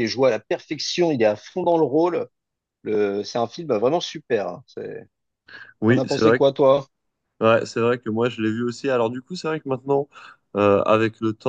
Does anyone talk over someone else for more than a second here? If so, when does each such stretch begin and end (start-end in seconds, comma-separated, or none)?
none